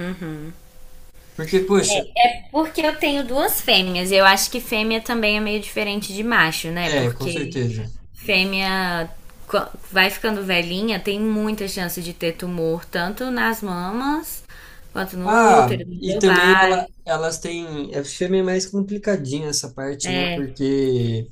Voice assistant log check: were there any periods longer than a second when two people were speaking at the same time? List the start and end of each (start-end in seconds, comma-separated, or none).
15.2-16.9